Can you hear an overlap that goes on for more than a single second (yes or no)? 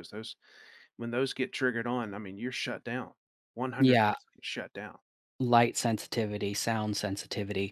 no